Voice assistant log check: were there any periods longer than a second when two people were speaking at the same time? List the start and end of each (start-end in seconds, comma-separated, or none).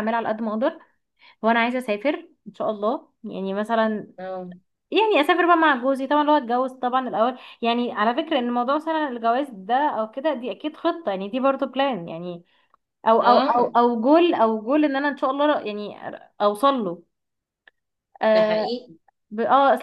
none